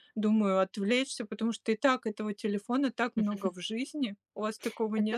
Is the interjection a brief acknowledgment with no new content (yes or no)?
no